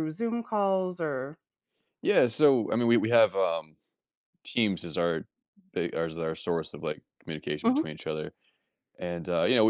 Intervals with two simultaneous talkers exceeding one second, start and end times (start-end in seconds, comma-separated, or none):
none